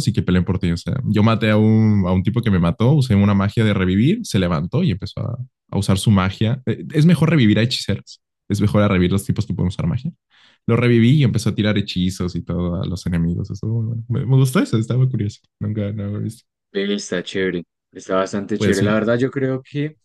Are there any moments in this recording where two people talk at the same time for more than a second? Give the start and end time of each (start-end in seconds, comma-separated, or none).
none